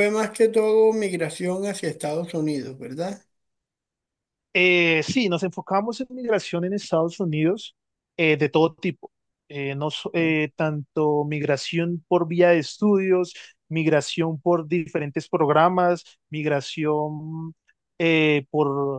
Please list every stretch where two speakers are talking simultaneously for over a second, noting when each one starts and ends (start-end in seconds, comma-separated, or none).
none